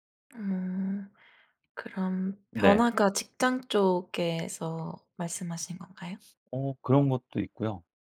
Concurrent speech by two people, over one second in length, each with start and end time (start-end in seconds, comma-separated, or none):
none